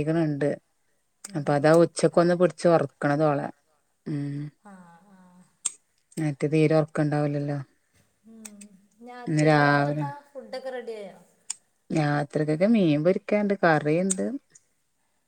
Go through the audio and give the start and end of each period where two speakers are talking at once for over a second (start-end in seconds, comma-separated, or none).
none